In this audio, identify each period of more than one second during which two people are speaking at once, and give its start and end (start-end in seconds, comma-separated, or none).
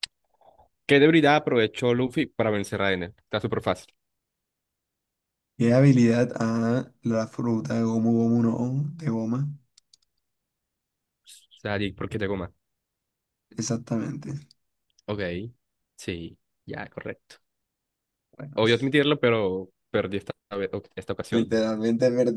none